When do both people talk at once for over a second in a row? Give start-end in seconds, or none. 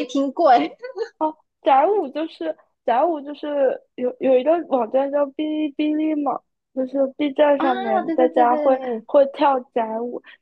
7.6-9.1